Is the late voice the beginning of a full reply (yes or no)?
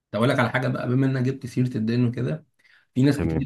no